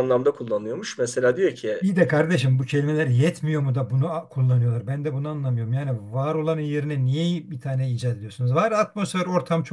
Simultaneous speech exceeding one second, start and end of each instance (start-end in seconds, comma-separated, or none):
none